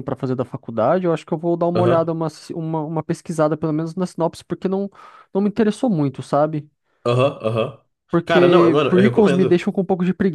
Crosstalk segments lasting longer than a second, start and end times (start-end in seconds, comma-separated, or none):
8.2-9.7